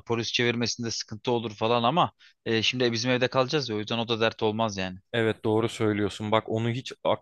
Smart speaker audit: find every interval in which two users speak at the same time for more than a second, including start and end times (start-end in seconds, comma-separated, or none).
none